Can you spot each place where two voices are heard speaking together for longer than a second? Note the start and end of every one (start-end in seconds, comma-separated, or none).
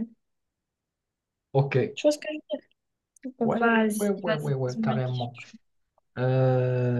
3.4-5.3